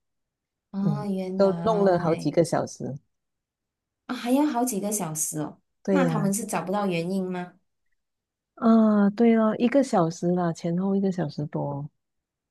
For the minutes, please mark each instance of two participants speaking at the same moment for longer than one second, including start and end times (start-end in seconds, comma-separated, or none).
0.8-2.3